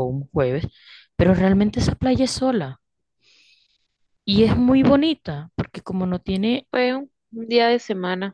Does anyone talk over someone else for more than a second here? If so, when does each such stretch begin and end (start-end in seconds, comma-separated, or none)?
none